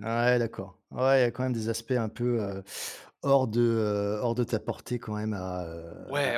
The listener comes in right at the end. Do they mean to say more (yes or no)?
yes